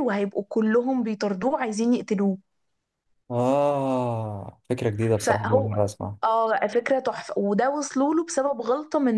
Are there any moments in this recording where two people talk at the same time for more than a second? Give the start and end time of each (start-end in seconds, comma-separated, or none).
none